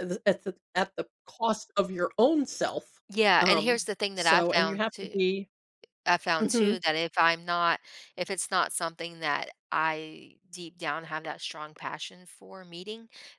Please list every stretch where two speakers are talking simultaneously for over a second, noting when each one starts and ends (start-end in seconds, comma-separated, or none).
3.4-5.2